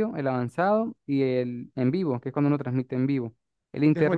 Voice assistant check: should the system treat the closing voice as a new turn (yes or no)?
yes